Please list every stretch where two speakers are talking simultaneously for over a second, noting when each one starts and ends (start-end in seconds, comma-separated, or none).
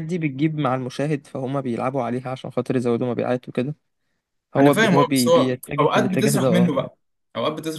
4.6-6.9